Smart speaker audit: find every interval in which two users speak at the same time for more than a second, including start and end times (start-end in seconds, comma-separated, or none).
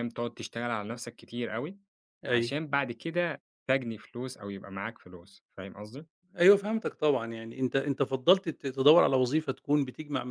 none